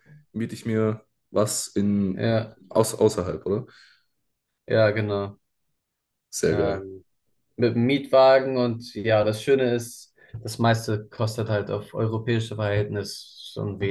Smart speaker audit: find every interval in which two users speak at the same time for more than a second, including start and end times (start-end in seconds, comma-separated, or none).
none